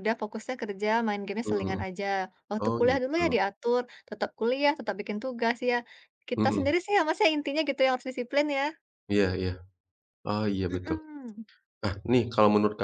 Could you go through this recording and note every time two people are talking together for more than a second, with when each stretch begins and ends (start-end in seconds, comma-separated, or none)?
none